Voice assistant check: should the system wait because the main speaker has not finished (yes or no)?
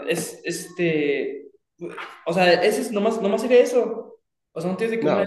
yes